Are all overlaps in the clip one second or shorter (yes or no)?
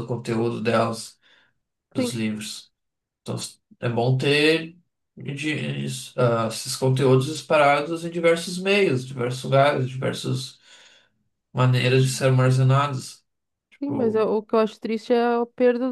yes